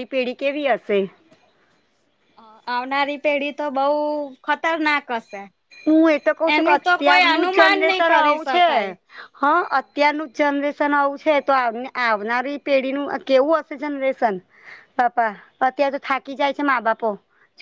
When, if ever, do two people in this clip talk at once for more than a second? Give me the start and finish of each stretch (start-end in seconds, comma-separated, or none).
6.5-8.7